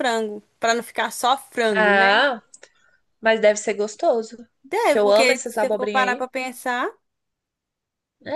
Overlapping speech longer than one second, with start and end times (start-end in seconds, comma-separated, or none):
4.9-6.2